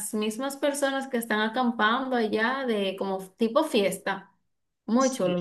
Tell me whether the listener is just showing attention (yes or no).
no